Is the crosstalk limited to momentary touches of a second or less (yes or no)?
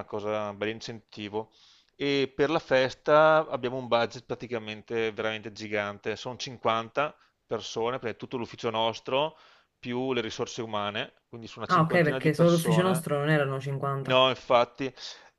no